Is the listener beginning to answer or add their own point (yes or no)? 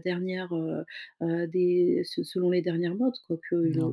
no